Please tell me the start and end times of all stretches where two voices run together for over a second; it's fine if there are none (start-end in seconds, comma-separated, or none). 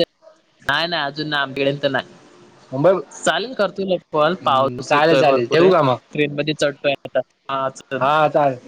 4.2-5.7